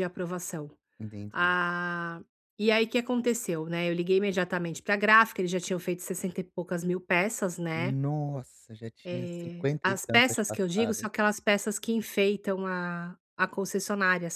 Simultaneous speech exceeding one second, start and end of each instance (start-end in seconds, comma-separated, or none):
9.0-11.1